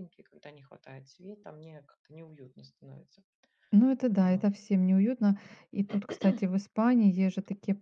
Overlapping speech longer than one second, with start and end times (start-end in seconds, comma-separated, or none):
none